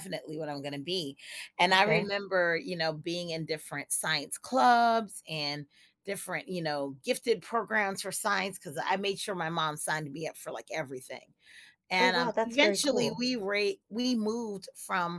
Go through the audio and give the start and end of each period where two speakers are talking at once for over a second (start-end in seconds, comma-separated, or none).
12.0-13.3